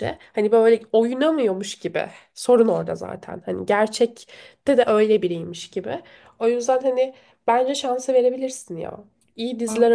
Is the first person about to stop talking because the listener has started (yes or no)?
no